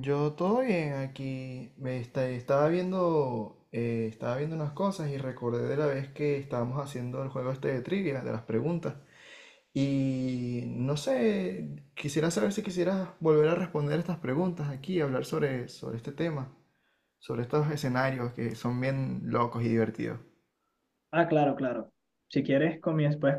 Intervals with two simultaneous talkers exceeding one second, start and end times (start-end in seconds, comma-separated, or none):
none